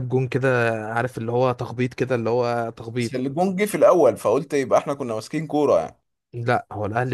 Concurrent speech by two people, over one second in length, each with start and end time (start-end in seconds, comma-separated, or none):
none